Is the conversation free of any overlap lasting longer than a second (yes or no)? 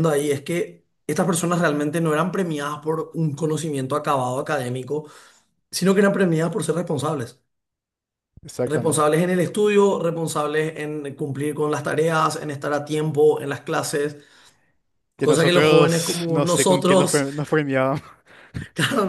no